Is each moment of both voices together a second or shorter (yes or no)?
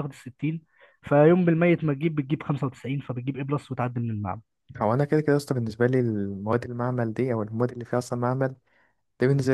yes